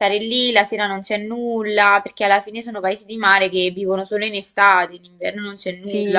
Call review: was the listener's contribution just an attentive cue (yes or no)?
no